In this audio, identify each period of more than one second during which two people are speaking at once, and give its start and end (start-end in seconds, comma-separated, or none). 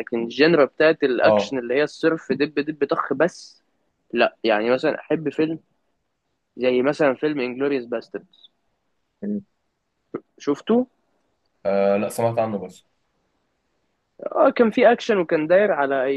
none